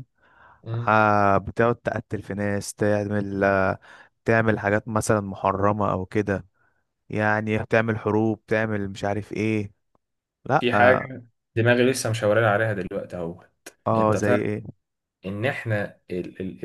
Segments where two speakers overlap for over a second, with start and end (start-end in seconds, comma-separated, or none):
none